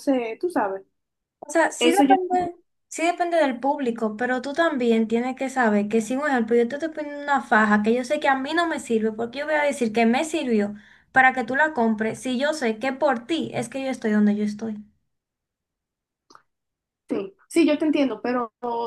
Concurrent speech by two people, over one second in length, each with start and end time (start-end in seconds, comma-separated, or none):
none